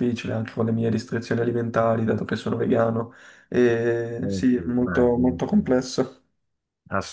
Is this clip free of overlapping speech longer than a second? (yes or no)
no